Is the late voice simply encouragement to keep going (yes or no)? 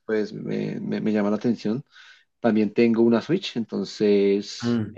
yes